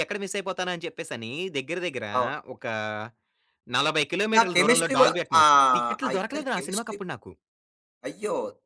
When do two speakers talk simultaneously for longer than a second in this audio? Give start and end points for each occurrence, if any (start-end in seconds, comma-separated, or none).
4.4-7.0